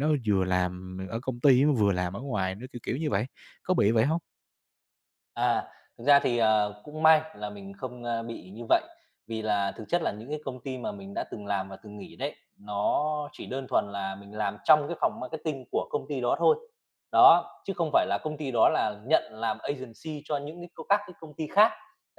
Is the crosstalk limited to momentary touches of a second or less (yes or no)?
yes